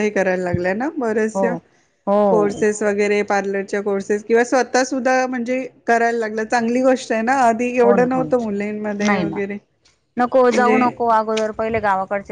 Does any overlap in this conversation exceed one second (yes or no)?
yes